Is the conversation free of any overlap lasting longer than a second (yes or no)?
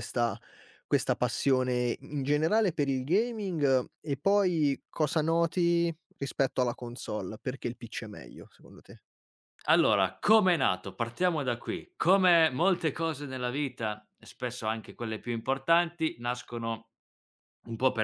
yes